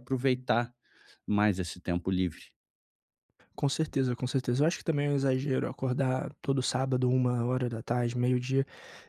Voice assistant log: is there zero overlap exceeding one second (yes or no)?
yes